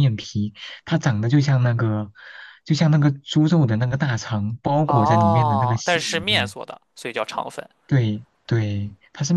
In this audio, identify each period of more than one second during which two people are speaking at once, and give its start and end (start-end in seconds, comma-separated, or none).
4.8-6.5